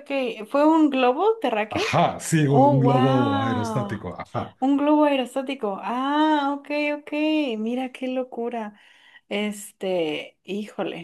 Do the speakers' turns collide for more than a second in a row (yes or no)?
yes